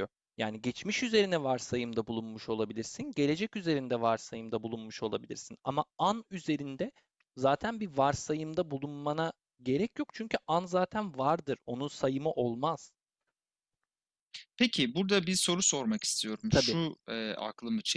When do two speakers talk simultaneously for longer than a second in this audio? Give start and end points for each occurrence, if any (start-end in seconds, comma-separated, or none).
none